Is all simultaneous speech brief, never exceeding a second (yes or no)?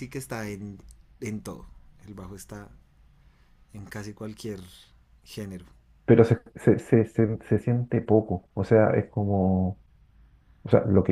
yes